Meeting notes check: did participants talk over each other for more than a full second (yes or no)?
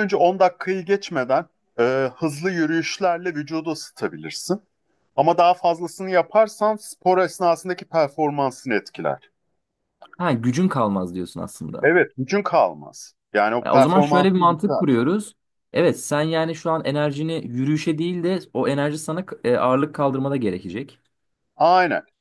yes